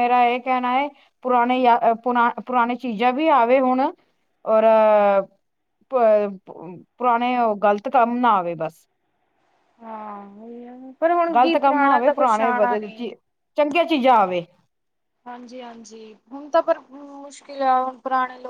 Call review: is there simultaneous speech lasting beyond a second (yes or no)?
yes